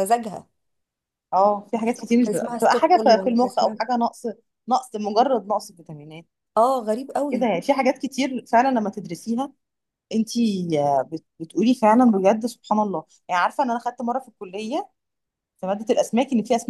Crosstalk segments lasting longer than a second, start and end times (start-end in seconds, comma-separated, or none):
1.9-3.8